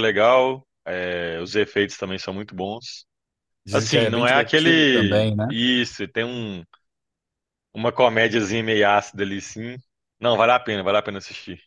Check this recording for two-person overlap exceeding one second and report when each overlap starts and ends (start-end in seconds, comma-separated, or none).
3.7-5.5